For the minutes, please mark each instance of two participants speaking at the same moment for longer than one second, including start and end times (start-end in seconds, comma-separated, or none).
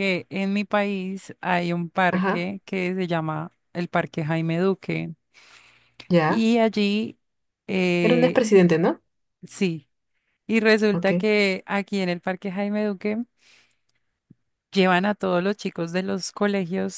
none